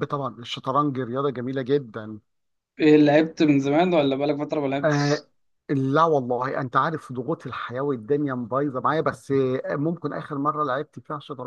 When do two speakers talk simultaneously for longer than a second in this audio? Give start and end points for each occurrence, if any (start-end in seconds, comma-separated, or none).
none